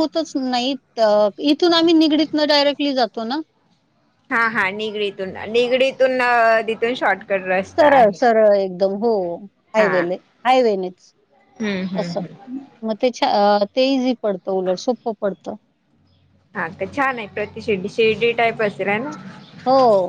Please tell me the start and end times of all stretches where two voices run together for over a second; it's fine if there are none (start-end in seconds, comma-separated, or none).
none